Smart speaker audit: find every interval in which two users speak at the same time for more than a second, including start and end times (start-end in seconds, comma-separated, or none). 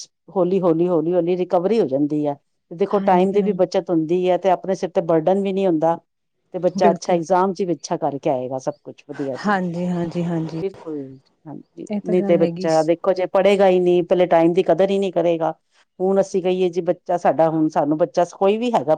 none